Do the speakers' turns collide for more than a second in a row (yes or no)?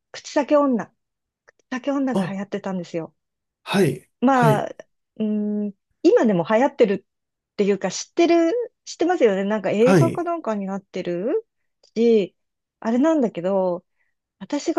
no